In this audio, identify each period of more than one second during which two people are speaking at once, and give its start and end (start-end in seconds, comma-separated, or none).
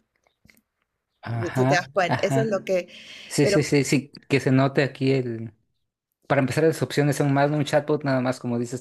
1.3-2.6